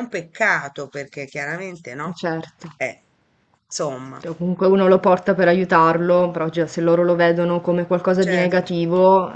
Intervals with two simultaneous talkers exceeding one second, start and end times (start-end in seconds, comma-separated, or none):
none